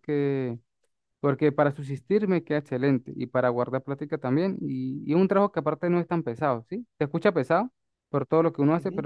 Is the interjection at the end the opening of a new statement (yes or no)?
no